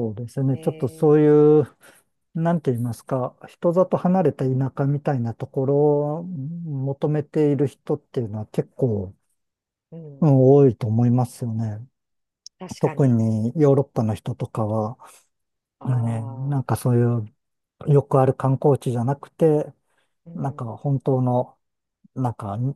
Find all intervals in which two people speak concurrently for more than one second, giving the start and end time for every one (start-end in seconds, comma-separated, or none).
none